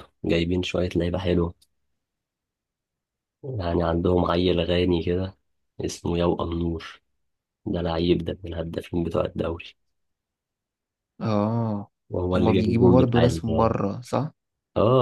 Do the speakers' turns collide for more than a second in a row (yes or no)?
yes